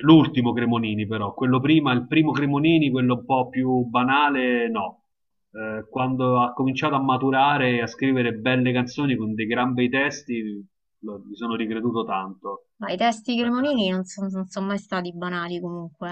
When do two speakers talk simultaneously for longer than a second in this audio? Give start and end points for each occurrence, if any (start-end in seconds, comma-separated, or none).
none